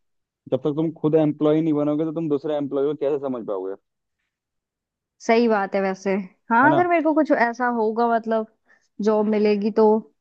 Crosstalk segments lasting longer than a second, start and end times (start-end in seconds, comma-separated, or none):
none